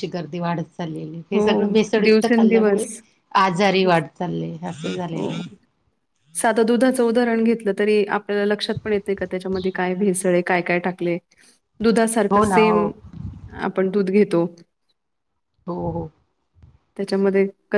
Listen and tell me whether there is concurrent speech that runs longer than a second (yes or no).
yes